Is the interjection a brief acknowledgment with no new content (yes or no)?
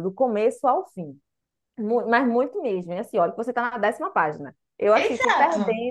yes